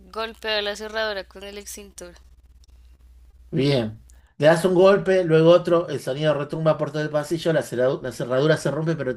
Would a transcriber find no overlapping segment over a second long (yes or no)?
yes